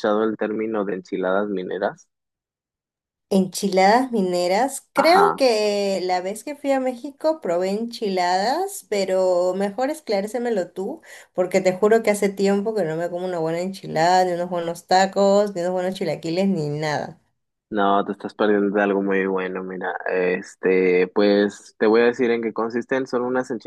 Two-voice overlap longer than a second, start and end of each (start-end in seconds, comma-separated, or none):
none